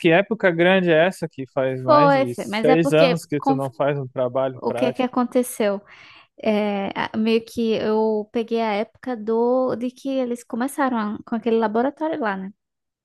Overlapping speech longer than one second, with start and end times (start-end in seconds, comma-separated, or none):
1.8-3.6